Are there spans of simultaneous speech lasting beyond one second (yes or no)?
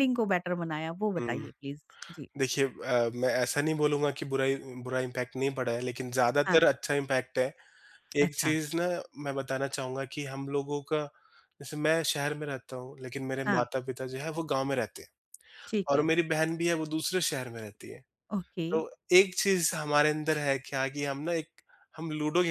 no